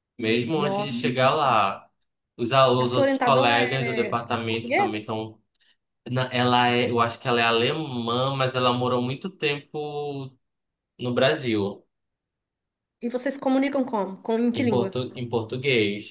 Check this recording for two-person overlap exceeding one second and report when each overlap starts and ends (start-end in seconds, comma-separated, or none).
2.8-5.0